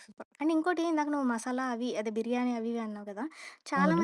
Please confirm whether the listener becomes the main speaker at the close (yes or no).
no